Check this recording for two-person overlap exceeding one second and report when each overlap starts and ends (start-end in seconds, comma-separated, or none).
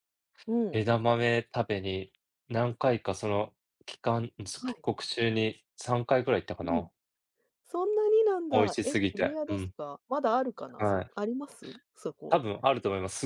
8.5-9.7